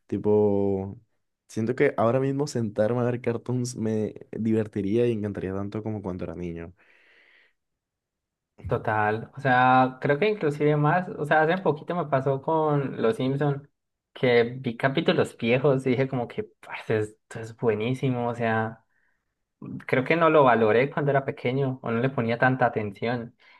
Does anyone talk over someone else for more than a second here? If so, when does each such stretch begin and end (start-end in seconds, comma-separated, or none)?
none